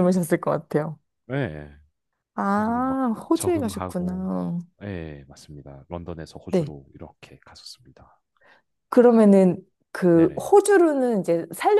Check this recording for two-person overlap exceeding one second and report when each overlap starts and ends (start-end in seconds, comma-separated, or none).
2.5-4.3